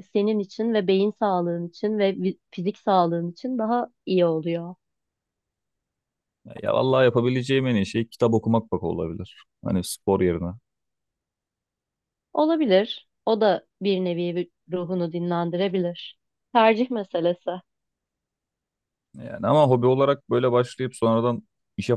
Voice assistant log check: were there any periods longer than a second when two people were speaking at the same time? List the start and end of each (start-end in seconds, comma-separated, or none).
none